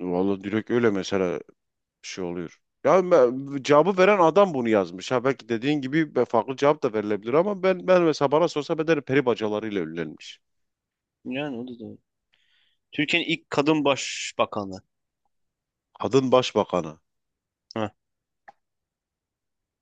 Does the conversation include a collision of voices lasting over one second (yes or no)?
no